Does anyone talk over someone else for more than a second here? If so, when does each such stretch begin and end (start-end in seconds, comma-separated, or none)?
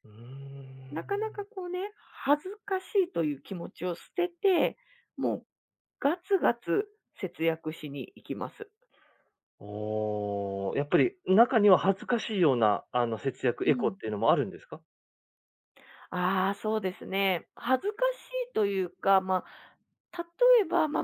none